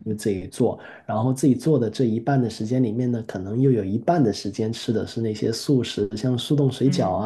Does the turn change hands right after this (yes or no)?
no